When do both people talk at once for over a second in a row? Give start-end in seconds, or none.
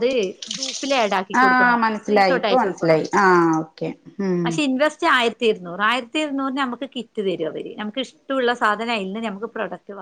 1.4-3.0